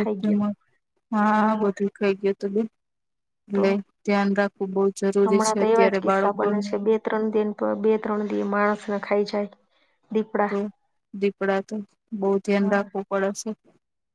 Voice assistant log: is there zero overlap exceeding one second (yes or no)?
no